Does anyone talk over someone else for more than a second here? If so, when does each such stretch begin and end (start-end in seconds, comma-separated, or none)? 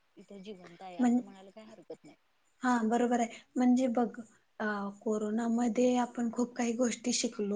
none